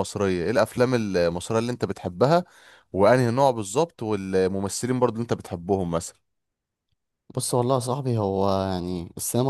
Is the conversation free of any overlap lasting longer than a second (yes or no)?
yes